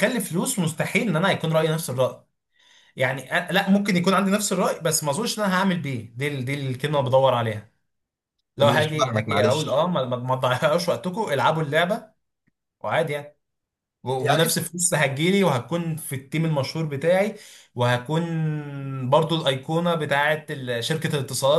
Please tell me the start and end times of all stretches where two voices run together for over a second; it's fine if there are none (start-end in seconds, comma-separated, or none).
8.6-9.9